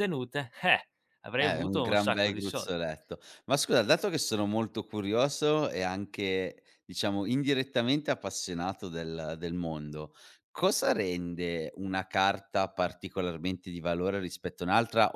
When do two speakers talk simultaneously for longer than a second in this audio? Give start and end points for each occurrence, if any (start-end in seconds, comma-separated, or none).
1.4-2.8